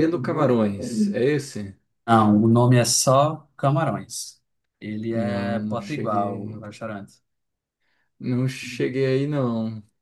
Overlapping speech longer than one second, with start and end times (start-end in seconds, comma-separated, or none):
5.1-6.6